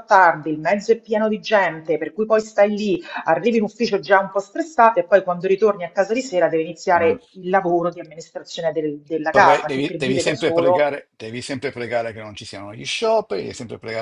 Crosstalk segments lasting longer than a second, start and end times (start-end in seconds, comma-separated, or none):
9.3-10.9